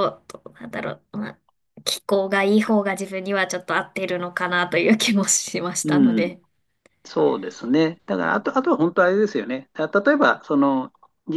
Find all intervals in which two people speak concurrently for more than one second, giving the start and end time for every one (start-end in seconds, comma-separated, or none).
none